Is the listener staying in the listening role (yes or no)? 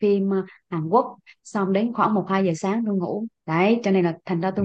yes